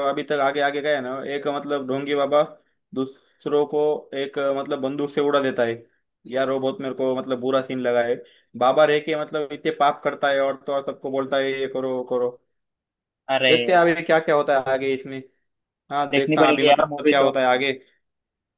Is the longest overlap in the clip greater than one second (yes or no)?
yes